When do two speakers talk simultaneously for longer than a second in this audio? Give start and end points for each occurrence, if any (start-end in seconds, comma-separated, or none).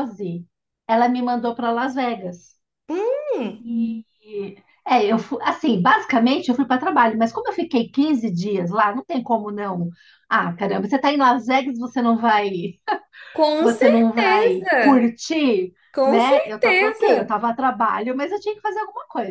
13.6-15.1, 15.9-17.4